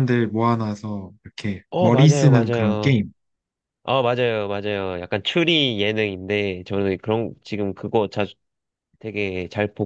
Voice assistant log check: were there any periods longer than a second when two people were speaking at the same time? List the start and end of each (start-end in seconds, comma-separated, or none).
1.7-3.0